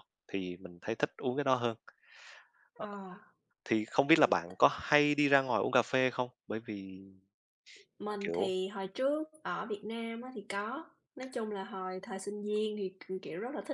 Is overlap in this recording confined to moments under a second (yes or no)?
yes